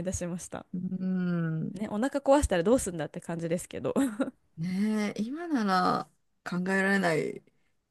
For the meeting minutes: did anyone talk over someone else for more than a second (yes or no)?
no